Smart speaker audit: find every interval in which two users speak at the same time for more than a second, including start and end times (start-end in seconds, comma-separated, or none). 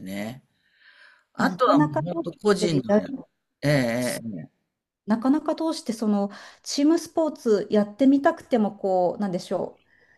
1.4-3.0